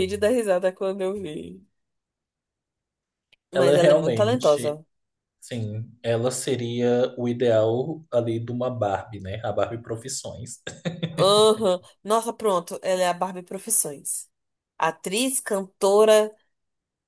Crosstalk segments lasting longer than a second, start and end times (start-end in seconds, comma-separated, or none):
3.5-4.8